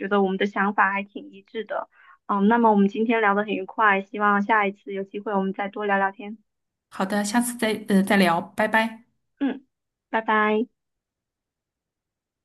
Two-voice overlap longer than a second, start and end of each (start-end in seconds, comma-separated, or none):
none